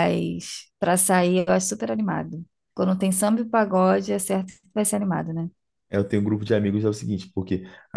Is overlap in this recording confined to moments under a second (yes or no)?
yes